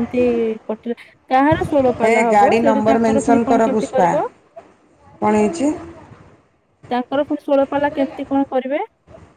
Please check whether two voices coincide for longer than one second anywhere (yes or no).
yes